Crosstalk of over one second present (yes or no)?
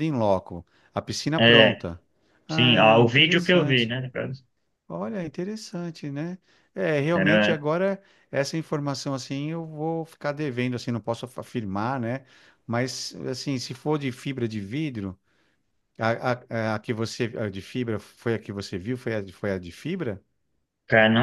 yes